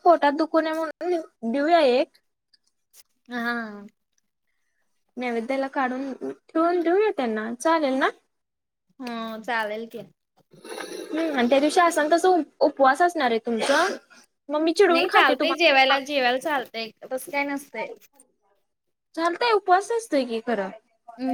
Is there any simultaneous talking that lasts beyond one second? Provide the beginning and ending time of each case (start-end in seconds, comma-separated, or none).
none